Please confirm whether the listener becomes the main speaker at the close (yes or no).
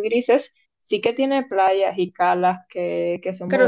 yes